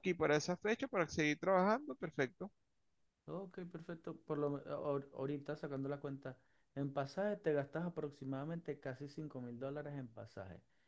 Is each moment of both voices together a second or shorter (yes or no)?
yes